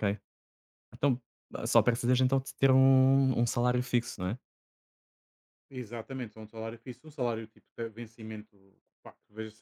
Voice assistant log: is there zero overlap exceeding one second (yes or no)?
yes